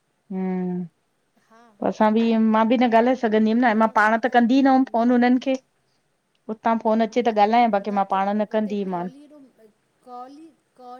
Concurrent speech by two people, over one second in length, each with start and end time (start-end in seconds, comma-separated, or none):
3.7-5.4